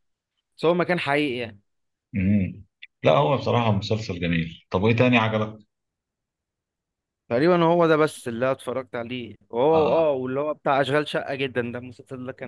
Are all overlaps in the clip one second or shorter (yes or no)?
yes